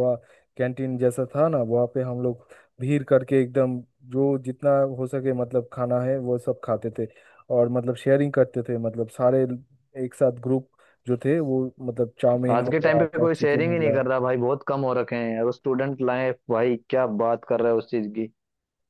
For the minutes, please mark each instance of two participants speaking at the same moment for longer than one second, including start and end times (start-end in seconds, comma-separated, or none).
12.5-14.0